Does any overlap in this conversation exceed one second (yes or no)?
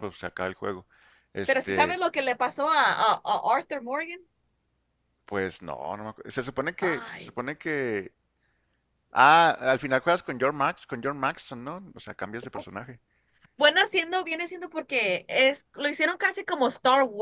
no